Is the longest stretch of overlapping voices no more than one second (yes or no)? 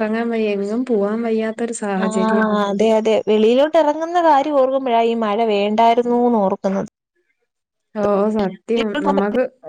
yes